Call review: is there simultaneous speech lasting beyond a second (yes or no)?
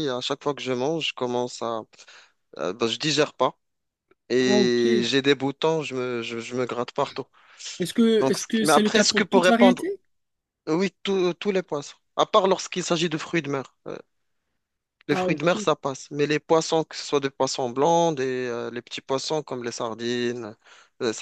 yes